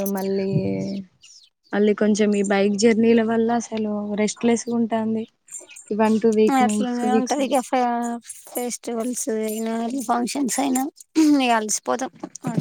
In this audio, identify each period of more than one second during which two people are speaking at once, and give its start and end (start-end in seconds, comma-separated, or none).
none